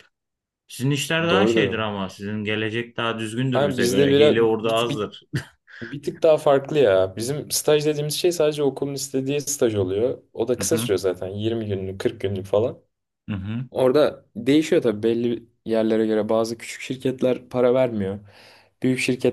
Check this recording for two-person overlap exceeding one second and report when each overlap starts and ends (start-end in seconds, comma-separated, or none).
3.5-5.1